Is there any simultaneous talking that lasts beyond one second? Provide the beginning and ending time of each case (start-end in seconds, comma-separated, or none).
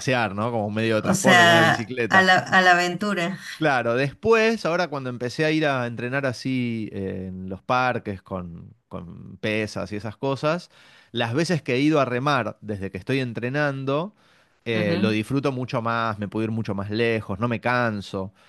1.0-2.2